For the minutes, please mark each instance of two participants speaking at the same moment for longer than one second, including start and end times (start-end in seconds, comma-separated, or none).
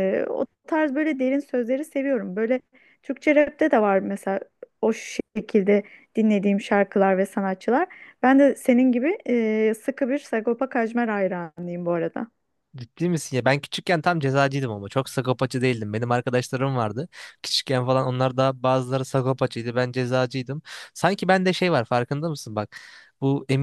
none